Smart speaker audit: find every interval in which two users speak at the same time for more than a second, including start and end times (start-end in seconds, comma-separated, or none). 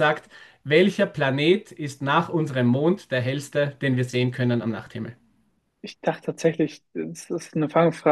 none